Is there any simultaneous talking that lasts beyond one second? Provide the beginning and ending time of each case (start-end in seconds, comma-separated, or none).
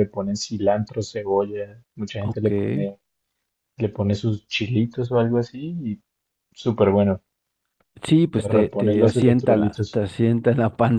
8.3-10.0